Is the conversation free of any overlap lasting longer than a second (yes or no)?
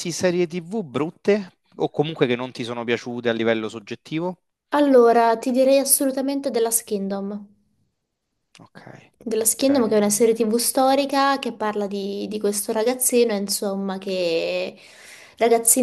yes